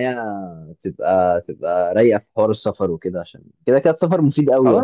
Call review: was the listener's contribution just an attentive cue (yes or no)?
no